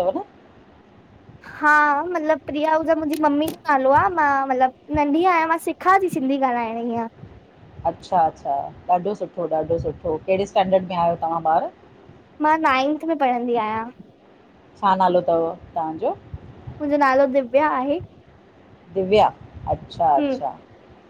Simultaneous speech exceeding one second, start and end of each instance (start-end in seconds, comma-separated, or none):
none